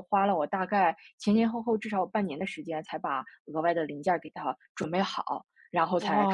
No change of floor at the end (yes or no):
no